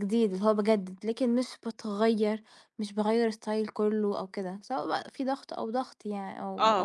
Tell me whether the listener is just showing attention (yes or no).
no